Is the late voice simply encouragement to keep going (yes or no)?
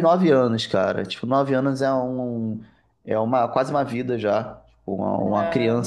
yes